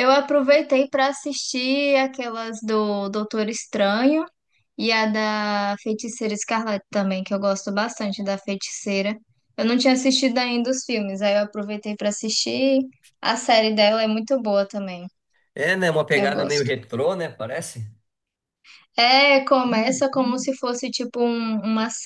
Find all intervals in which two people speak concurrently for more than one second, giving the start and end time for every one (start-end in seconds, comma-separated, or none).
none